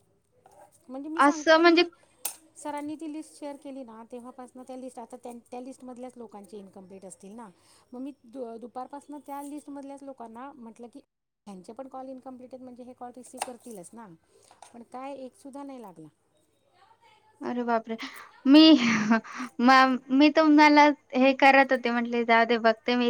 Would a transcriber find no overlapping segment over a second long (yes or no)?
yes